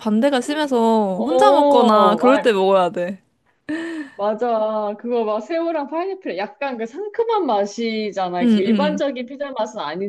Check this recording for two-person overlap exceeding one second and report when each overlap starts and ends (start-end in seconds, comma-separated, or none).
1.2-2.5